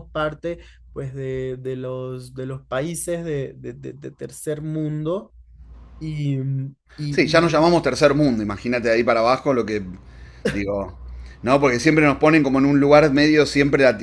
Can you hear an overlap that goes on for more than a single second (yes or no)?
no